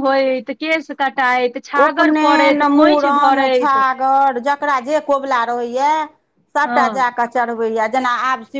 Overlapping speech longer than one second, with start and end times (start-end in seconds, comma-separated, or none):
1.9-3.8